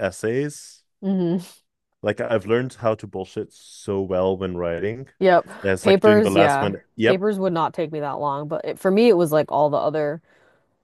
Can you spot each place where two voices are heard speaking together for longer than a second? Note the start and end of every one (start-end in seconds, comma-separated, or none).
5.6-7.2